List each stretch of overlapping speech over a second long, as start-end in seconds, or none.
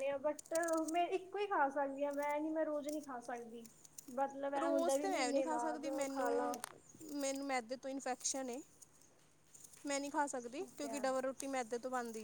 4.6-6.3